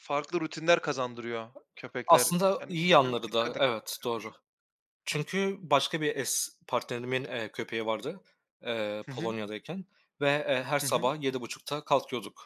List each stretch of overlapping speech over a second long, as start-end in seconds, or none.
2.1-3.8